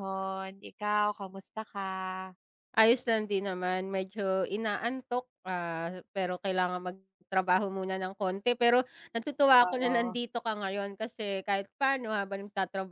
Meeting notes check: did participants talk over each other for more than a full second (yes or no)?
no